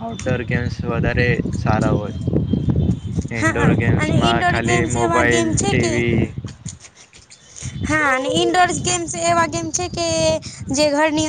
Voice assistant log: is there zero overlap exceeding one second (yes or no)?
no